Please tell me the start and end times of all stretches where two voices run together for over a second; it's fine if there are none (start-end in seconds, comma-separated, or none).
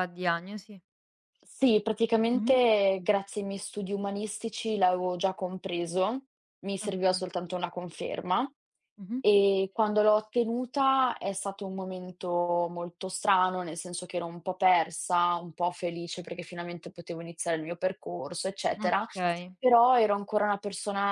none